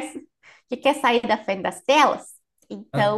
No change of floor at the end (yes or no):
yes